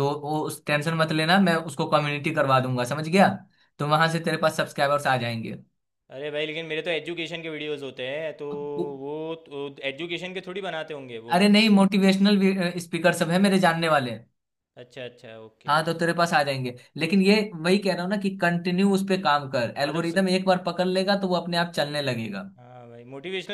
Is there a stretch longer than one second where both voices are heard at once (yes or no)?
no